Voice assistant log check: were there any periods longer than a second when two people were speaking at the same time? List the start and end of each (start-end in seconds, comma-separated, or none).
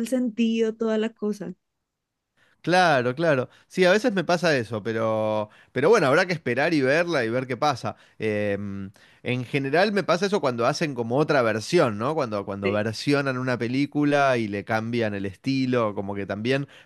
none